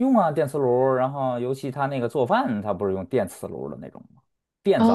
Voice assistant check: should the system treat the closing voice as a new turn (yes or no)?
yes